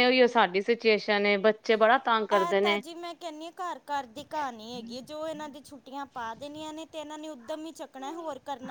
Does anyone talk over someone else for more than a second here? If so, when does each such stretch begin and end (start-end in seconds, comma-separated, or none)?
none